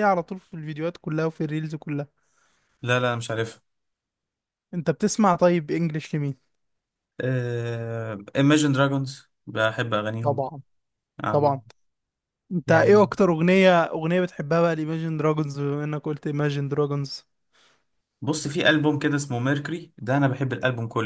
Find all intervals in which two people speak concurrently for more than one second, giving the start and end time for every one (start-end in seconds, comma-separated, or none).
none